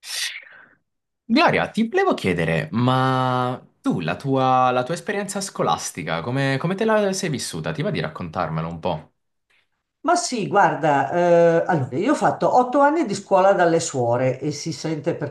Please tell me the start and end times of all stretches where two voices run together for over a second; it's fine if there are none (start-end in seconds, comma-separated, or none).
none